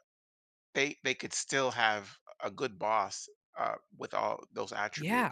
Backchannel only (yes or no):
no